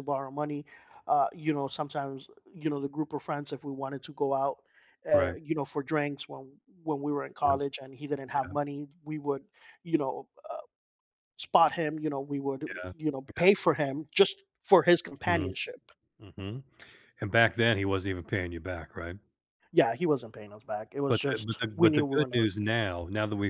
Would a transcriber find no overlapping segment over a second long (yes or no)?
no